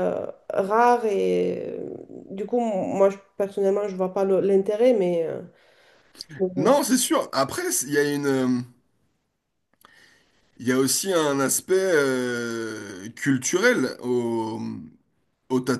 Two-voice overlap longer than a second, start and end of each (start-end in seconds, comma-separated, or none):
none